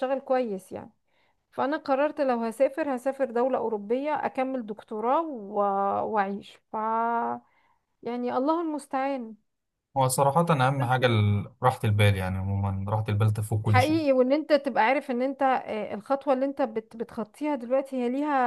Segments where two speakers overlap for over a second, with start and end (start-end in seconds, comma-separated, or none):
none